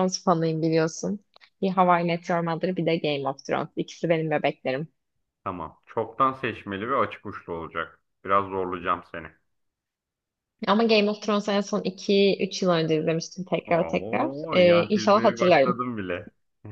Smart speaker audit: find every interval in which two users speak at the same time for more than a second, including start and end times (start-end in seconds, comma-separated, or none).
13.7-15.8